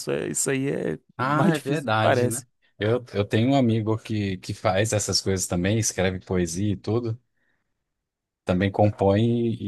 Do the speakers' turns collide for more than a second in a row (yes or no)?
yes